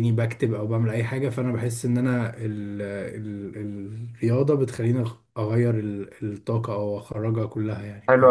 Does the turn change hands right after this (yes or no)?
yes